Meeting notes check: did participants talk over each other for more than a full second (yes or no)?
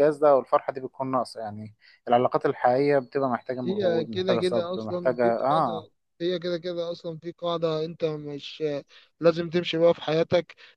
yes